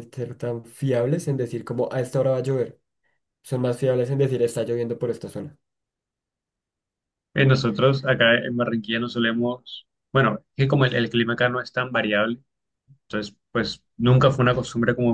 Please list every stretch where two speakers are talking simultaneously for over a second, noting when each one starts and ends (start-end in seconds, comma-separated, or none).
none